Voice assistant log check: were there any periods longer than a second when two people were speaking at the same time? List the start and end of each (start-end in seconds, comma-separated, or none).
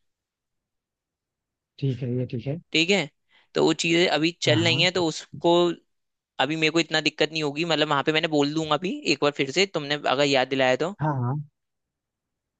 none